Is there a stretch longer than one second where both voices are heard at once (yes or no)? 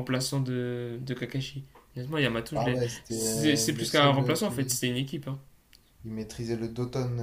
yes